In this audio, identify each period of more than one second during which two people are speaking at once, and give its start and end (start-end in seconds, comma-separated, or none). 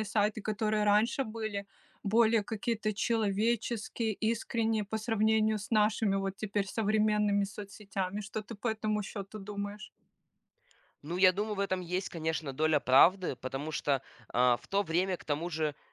none